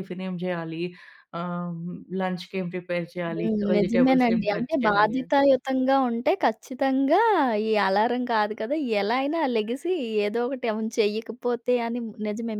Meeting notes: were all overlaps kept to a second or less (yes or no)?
no